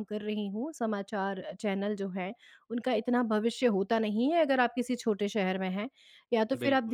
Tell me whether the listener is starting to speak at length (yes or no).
no